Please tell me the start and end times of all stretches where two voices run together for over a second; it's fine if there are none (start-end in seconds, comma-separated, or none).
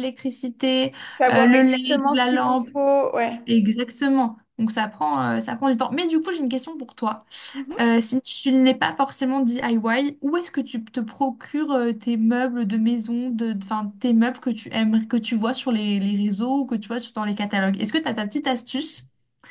1.3-2.7